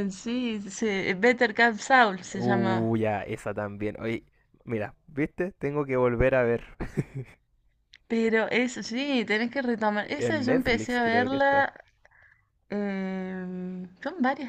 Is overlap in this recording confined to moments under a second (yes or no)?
no